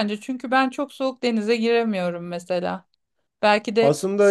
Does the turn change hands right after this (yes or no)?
no